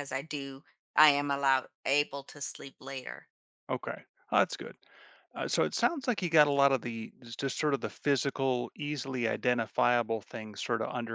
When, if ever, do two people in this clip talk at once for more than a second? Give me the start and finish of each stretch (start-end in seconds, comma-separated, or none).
none